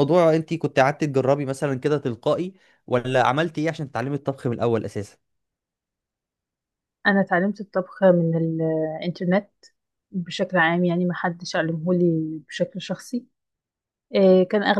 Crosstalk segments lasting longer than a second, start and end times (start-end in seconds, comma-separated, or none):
none